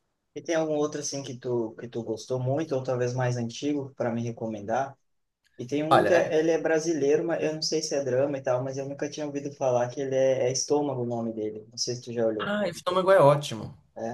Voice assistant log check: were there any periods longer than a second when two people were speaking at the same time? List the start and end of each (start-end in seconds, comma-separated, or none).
none